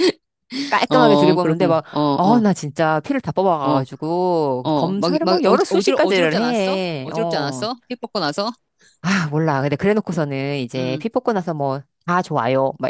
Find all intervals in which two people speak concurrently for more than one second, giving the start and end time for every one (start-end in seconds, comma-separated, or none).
0.9-2.4, 4.6-7.7